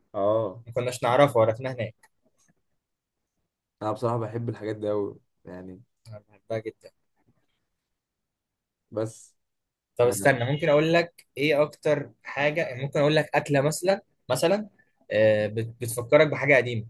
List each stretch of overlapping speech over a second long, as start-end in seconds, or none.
none